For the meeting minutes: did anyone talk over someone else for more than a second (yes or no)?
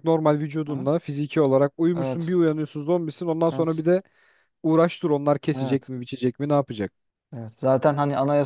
no